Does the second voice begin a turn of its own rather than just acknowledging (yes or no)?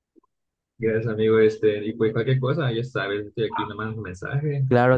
yes